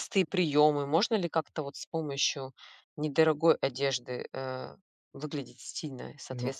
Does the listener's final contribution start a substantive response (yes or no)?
yes